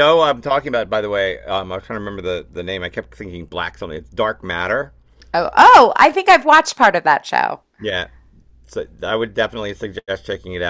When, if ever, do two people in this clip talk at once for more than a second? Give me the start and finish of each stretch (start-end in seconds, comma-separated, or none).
none